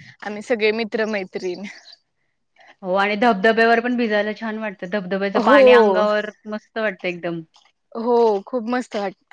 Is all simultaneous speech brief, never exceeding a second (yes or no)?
yes